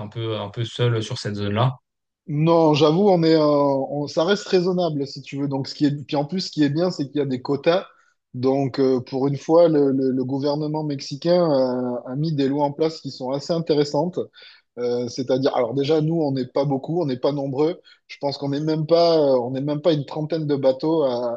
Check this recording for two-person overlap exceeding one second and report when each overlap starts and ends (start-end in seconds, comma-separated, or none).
none